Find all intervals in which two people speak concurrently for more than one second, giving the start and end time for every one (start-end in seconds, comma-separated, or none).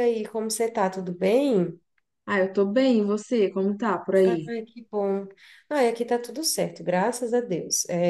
none